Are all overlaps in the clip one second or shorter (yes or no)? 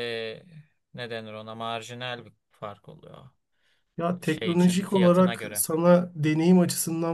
no